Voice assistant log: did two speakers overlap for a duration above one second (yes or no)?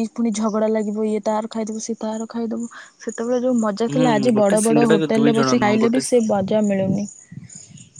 yes